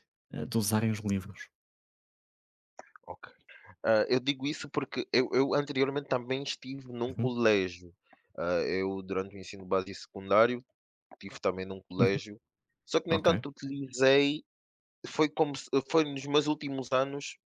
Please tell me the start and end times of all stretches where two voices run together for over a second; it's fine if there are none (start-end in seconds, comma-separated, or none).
none